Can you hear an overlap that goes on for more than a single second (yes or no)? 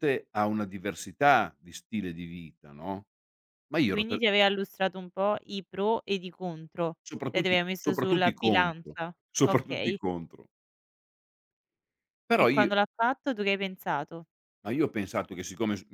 yes